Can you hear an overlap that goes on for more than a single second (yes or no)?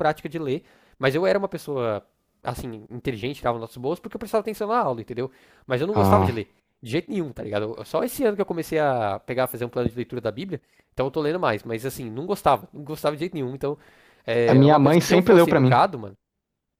yes